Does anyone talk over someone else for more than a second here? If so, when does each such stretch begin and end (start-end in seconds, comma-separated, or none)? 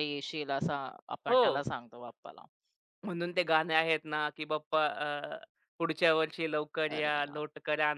none